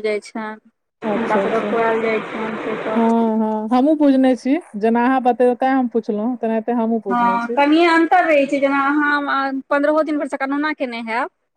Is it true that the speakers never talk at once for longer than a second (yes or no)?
yes